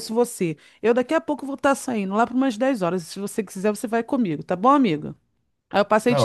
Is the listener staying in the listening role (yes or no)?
no